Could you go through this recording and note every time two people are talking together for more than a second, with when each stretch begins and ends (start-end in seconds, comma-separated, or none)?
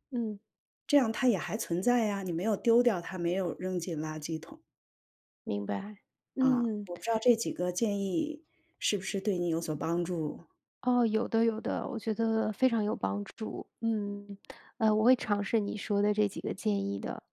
none